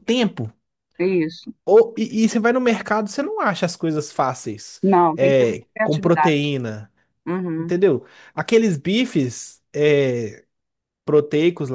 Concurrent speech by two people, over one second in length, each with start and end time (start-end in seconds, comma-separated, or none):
5.2-6.5